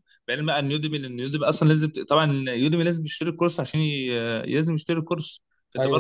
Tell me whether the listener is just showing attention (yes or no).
yes